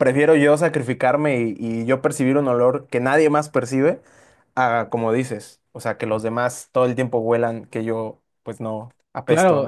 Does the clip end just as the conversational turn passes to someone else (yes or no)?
yes